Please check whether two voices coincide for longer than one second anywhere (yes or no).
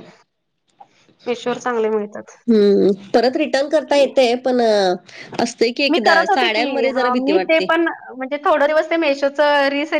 yes